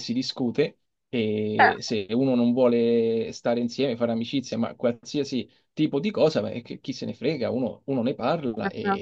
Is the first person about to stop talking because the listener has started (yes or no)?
yes